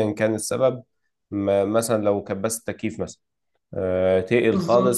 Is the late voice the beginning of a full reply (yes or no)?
no